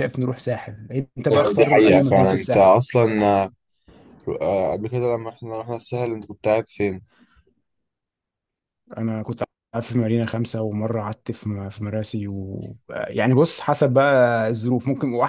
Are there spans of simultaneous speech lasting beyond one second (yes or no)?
yes